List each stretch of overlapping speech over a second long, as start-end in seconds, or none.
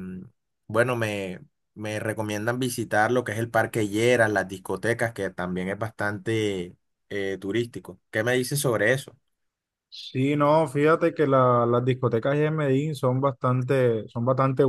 none